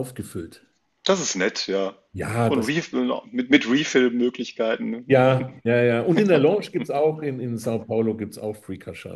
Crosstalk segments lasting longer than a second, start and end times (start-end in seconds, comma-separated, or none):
none